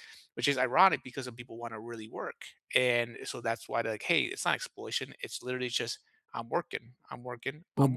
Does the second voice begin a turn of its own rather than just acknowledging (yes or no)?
yes